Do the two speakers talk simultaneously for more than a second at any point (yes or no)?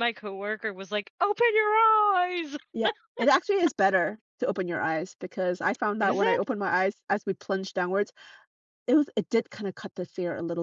no